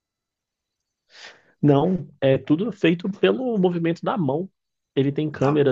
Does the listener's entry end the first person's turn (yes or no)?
no